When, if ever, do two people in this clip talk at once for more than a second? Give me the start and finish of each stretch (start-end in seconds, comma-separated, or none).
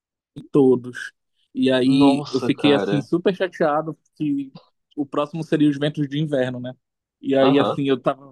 1.9-3.1